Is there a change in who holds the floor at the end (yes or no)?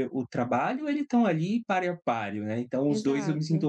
no